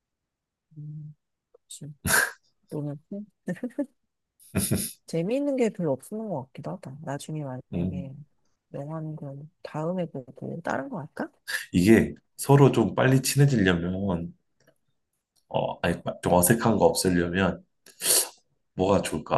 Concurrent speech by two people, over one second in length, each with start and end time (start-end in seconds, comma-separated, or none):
none